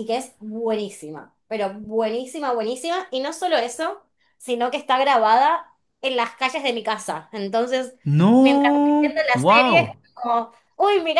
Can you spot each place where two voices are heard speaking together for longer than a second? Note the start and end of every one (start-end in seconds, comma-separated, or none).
8.4-10.0